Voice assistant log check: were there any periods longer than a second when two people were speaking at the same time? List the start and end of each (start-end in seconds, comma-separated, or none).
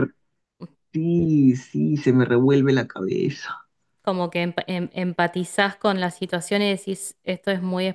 none